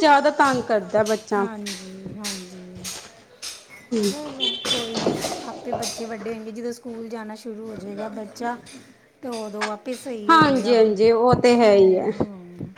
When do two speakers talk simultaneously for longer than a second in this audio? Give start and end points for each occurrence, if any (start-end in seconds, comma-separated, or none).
none